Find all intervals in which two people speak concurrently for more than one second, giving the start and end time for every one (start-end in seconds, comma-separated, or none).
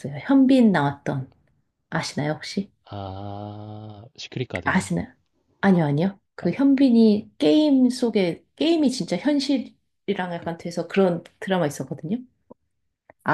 none